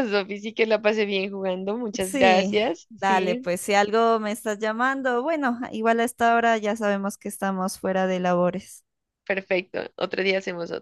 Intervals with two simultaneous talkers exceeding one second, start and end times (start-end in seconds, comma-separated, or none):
2.0-3.5